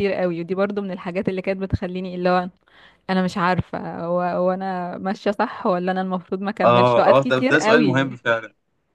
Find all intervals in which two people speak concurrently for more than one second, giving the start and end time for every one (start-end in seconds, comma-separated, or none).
6.6-8.1